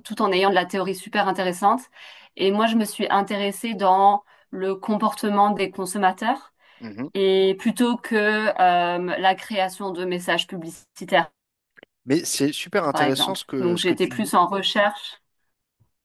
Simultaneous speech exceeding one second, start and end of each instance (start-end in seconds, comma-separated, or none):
12.9-14.3